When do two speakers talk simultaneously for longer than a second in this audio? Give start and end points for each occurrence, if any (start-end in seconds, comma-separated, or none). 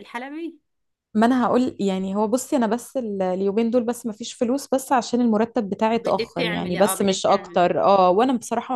6.0-7.7